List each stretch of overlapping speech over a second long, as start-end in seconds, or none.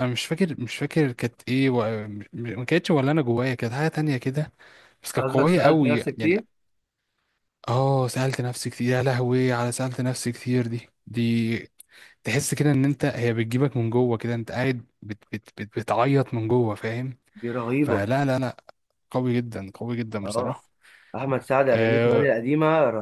5.2-6.4